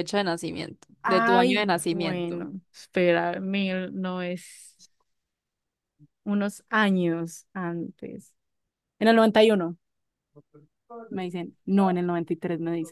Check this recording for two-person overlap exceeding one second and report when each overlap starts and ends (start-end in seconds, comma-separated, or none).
1.0-2.5